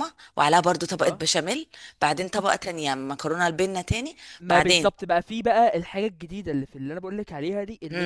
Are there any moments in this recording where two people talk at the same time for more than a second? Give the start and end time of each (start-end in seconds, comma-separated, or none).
none